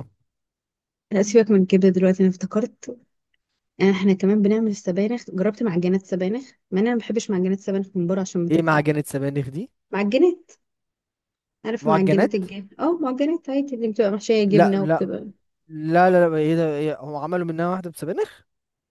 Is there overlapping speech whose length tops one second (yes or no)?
no